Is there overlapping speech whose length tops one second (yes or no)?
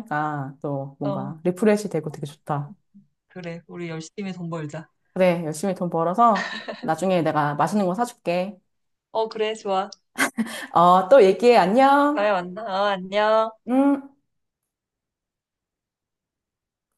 no